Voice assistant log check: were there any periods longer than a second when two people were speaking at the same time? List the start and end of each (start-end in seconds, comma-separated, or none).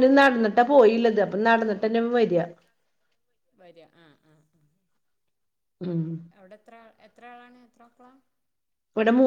none